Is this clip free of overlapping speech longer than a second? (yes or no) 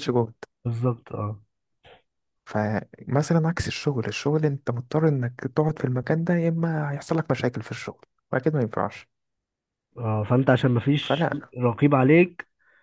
yes